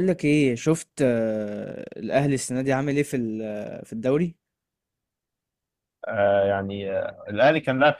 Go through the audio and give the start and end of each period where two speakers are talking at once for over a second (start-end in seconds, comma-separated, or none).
none